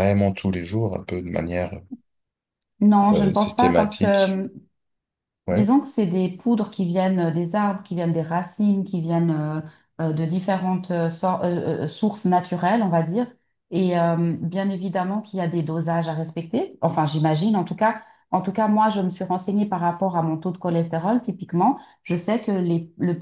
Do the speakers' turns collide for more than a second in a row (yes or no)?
yes